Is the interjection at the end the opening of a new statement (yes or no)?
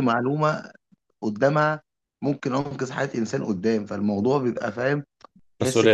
no